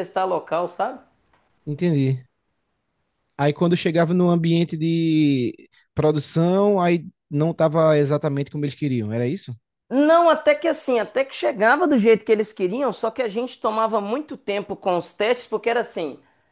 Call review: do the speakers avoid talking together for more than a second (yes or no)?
yes